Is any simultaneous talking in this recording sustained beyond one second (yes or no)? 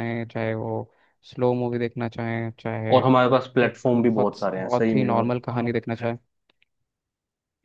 yes